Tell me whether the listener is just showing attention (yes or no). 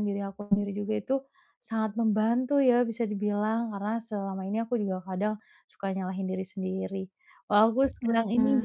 yes